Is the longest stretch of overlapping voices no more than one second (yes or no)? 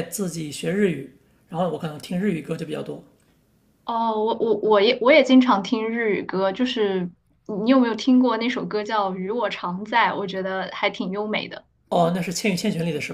yes